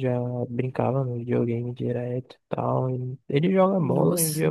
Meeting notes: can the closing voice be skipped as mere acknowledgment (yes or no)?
yes